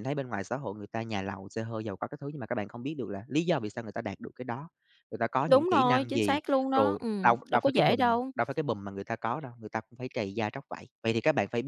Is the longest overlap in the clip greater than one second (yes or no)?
yes